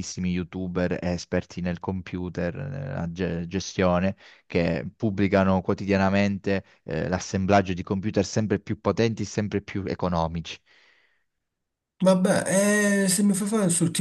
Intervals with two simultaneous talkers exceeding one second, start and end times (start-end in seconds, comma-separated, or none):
none